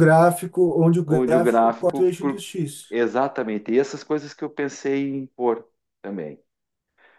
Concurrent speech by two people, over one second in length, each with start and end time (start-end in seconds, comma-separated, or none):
1.1-2.4